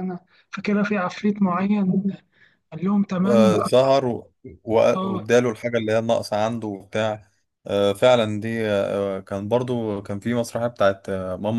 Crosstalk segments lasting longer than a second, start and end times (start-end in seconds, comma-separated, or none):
none